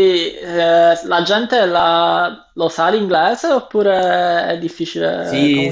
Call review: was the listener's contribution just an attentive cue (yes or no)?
no